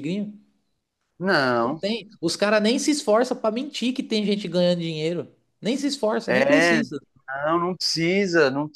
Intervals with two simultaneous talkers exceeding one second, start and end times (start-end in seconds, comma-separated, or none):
none